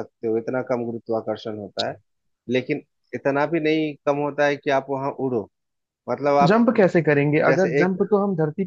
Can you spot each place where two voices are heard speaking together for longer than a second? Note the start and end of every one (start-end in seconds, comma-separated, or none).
none